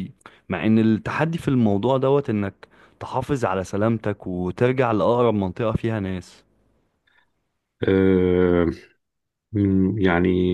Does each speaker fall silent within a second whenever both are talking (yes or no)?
yes